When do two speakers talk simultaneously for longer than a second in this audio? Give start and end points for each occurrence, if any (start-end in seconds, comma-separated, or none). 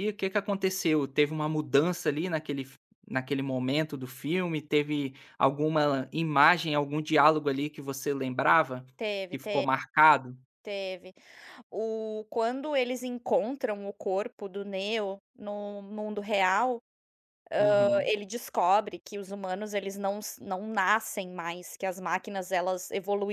none